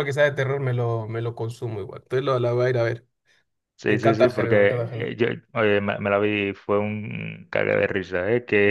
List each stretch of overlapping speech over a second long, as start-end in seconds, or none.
3.9-5.1